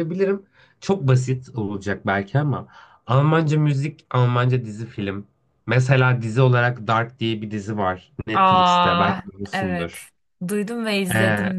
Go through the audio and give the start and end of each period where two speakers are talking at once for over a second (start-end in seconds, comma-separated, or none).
8.3-10.0